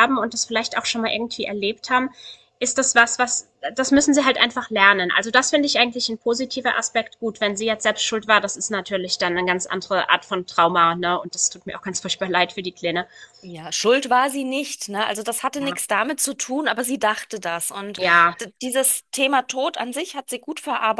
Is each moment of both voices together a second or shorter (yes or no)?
yes